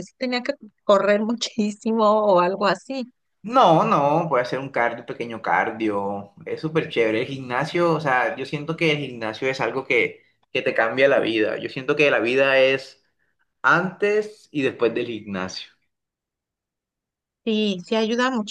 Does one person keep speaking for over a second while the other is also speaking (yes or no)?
no